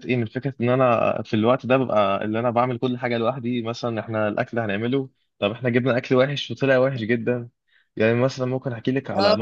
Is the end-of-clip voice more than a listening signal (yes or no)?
no